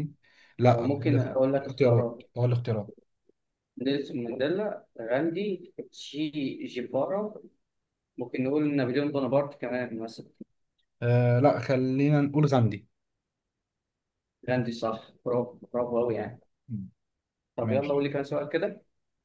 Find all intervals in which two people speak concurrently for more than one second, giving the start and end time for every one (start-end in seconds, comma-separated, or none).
0.7-2.3